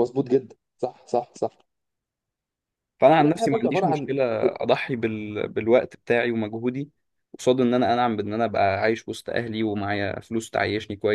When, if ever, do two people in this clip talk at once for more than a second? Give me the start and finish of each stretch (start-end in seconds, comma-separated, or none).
3.2-4.5